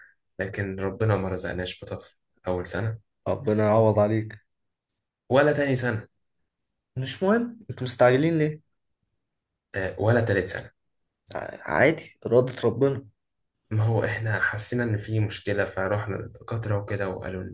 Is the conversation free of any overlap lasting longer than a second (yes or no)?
yes